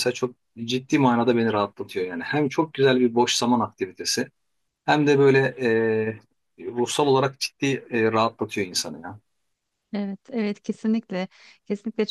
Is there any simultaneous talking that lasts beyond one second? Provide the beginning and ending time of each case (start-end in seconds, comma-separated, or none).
none